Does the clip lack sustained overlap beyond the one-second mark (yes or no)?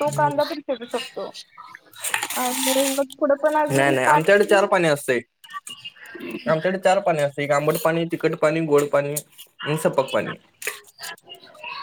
yes